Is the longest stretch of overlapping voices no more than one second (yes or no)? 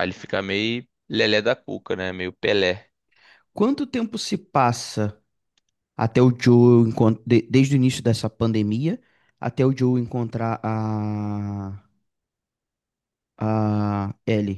yes